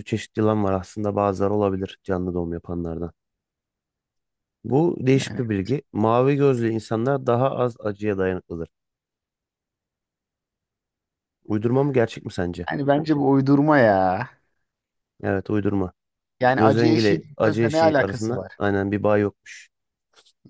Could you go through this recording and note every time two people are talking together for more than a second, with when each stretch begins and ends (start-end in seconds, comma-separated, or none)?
16.6-18.5